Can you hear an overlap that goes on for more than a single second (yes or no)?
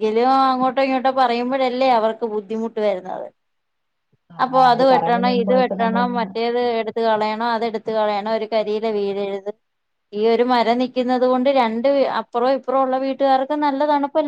yes